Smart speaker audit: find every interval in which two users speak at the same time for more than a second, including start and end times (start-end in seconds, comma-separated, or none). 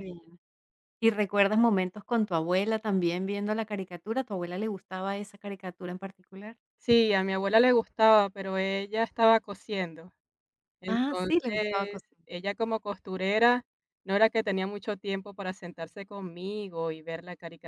10.9-12.3